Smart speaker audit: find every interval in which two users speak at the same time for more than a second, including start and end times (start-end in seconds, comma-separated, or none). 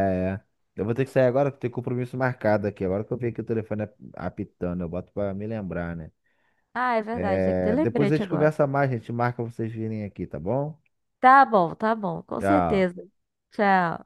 7.1-8.5